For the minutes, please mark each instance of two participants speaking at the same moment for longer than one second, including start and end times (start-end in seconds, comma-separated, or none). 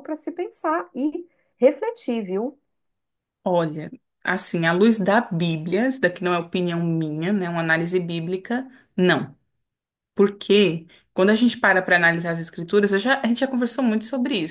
none